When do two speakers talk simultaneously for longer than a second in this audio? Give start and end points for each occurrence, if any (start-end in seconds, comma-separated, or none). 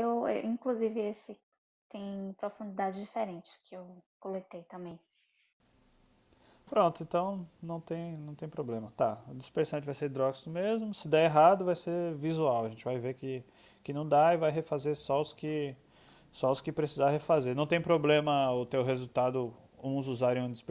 none